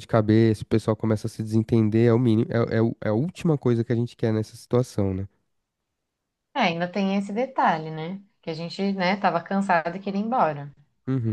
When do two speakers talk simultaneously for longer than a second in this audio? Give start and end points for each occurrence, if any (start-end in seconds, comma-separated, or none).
none